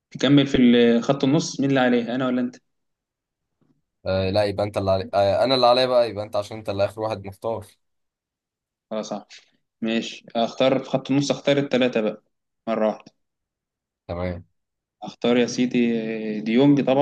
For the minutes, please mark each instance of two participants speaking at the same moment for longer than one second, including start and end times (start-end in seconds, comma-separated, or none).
none